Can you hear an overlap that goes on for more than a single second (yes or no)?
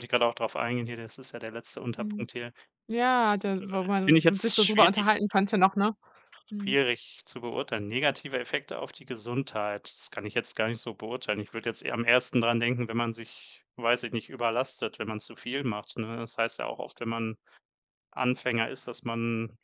yes